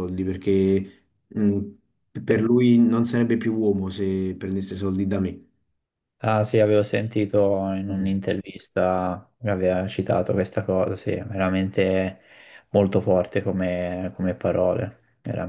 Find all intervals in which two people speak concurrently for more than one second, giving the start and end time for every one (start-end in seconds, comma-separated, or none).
none